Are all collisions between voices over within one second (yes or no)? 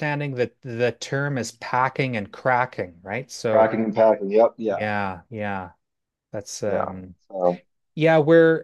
yes